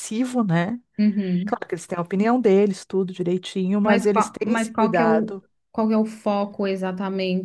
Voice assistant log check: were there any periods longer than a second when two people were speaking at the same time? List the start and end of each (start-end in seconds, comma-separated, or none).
3.8-5.3